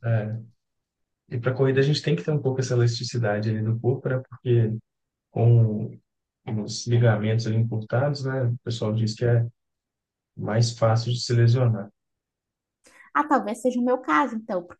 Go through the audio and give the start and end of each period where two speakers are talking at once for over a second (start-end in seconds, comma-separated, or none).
none